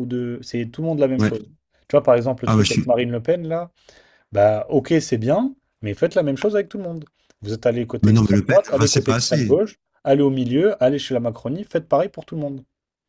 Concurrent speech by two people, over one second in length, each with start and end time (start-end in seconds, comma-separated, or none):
8.0-9.6